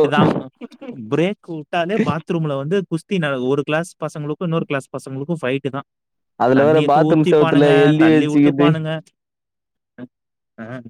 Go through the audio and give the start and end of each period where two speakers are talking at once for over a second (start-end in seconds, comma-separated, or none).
6.6-8.7